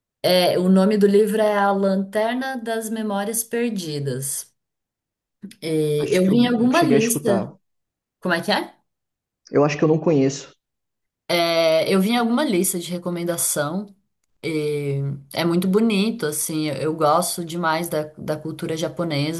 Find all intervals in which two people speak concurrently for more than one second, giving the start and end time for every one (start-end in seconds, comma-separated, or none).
6.0-7.5